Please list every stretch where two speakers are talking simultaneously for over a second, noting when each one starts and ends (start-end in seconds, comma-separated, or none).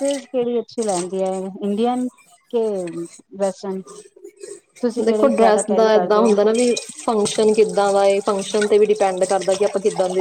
none